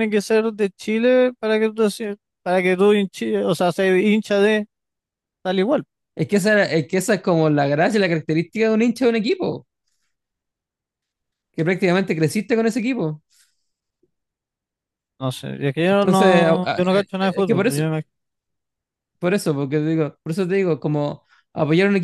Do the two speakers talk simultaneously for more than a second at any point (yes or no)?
yes